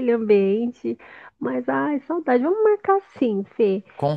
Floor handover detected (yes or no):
no